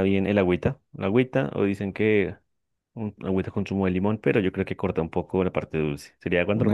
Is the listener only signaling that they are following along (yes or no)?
no